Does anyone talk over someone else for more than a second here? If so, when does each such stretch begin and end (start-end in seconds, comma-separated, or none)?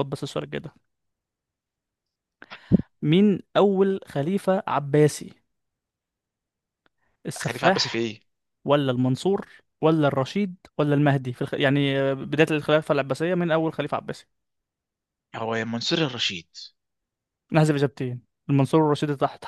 none